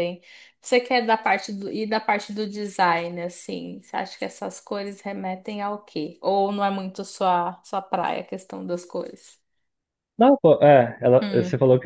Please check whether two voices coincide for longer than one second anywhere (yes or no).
no